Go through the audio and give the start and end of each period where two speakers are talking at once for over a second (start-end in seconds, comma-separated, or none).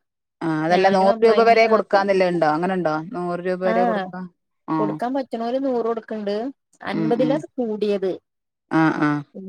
none